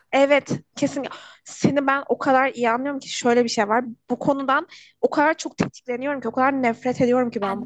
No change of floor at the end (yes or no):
yes